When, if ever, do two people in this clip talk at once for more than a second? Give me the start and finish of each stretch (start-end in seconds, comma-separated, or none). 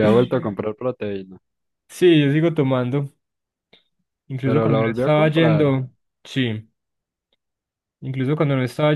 4.4-5.7